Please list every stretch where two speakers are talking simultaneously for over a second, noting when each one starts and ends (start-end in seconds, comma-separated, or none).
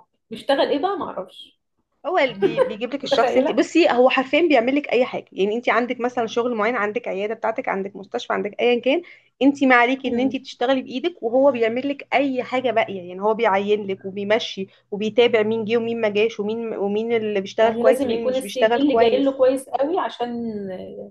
17.6-19.4